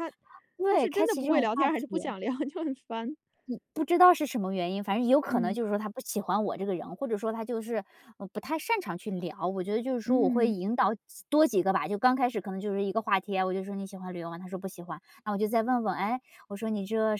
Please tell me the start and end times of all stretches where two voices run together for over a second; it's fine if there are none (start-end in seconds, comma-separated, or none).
0.6-2.1